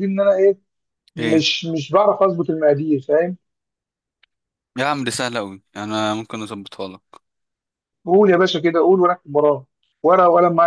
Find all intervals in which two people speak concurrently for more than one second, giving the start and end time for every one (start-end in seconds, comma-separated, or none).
none